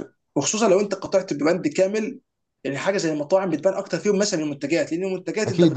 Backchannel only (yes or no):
yes